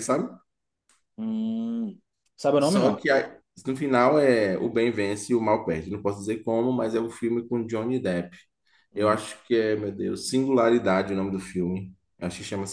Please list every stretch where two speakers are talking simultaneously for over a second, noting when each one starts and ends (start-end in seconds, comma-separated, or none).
none